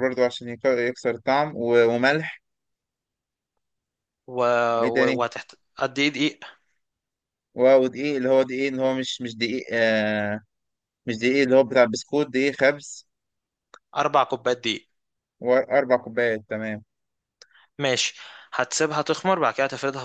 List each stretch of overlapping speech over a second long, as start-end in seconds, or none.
none